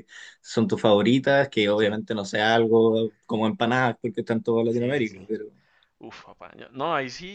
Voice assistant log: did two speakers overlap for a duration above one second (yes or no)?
no